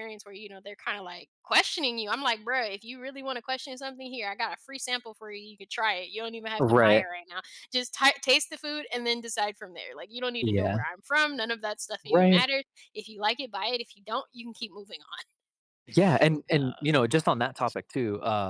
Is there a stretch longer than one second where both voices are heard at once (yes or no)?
no